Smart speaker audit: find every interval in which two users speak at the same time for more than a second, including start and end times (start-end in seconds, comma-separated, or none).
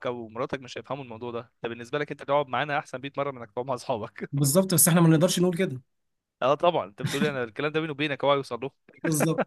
none